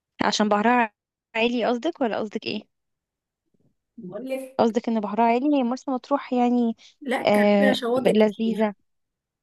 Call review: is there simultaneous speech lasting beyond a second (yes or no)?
yes